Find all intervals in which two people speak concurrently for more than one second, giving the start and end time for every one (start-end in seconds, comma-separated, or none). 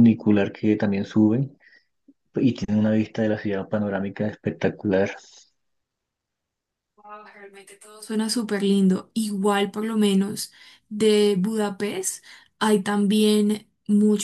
none